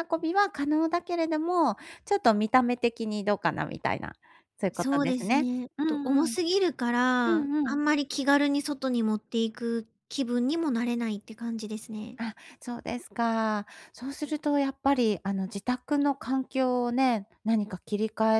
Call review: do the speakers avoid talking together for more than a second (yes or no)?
no